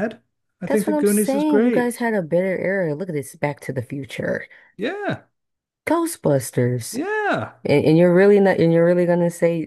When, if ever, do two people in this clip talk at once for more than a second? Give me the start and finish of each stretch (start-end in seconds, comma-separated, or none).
0.7-1.9